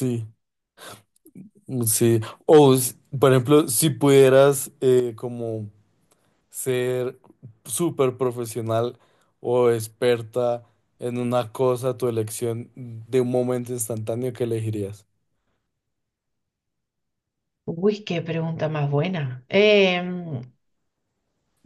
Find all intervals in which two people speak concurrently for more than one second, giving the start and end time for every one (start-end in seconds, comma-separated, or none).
none